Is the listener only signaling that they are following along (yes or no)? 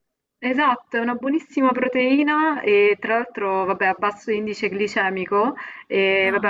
yes